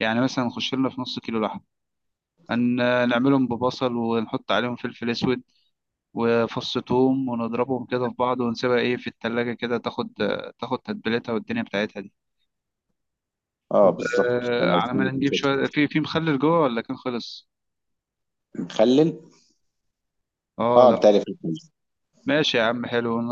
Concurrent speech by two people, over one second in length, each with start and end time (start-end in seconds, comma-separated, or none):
13.8-15.4